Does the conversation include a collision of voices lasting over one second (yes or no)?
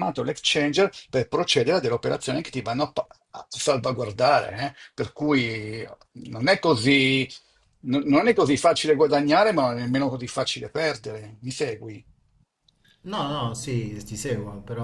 no